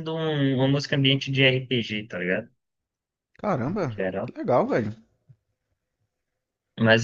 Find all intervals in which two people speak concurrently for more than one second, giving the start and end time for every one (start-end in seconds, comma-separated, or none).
none